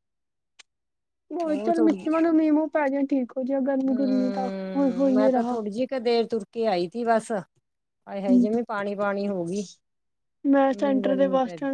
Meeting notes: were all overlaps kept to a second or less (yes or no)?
no